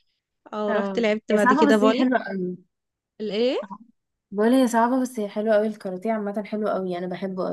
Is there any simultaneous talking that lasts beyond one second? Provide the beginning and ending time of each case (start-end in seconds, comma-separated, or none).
0.7-2.0